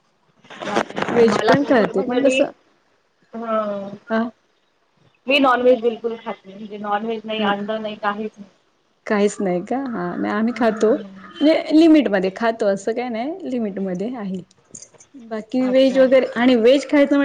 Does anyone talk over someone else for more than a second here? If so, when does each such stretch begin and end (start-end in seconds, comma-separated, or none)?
0.7-2.4